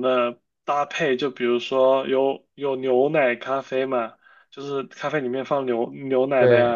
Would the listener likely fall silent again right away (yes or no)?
yes